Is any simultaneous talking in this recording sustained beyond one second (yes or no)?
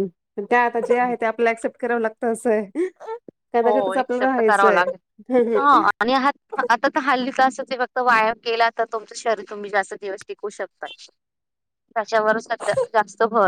yes